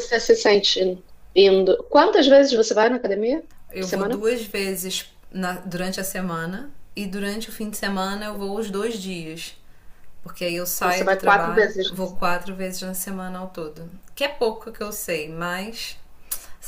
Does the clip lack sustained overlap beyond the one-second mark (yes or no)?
no